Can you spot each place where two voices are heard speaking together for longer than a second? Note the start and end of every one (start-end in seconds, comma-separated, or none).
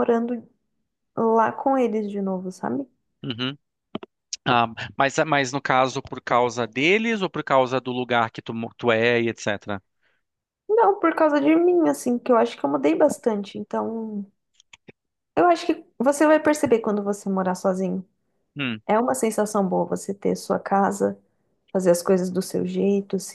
none